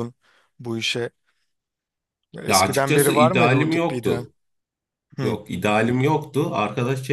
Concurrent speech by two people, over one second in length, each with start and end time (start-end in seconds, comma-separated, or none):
2.5-4.3